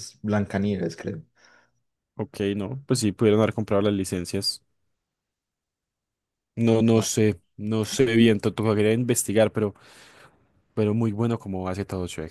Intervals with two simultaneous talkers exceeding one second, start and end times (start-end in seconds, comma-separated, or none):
none